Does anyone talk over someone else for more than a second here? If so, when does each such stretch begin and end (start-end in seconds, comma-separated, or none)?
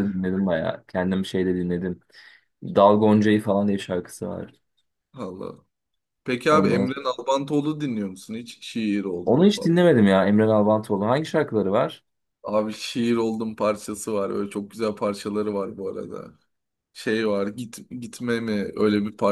none